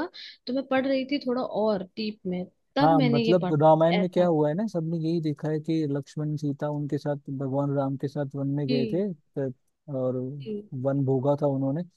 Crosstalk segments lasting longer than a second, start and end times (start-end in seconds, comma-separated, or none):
2.8-4.3